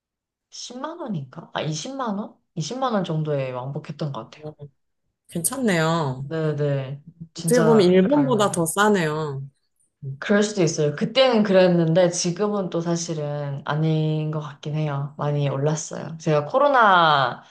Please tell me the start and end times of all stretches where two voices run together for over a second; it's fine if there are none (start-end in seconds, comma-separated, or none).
7.4-8.7